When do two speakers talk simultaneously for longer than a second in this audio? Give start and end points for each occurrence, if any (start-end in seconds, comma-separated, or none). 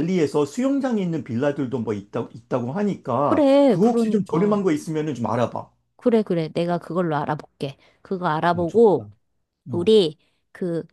3.2-4.6